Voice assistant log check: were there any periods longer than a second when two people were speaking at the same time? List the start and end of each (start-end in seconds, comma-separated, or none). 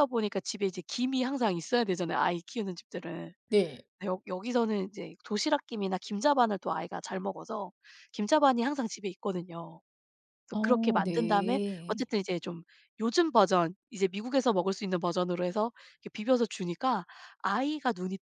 10.5-12.0